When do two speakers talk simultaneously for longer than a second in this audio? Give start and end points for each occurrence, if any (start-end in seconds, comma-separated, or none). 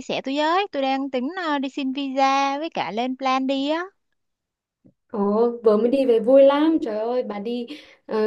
none